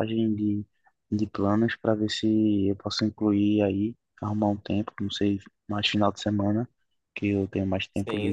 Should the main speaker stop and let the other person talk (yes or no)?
yes